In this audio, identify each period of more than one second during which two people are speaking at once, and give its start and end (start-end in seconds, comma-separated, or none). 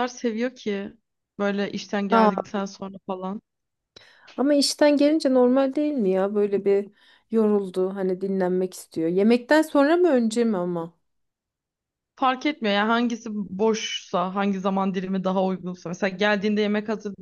none